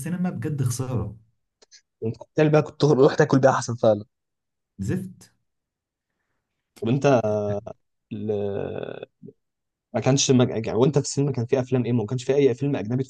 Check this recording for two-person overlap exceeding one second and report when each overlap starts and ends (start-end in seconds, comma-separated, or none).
none